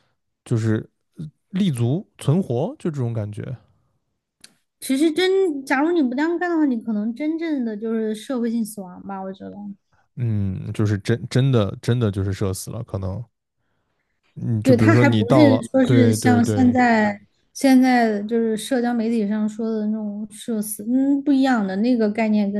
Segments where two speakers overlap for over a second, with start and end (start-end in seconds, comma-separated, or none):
14.6-16.8